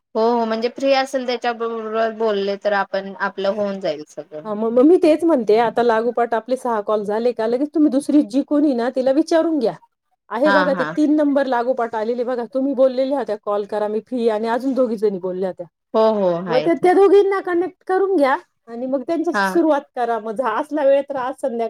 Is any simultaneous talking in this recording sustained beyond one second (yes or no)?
no